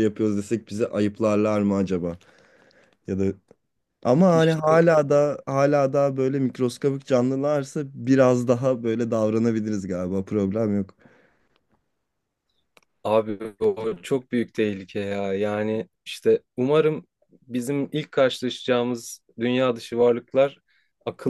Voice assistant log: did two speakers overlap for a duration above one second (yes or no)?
no